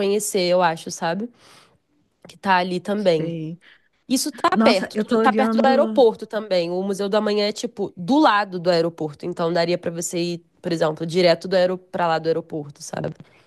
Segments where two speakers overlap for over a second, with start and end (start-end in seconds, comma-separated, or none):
4.5-6.1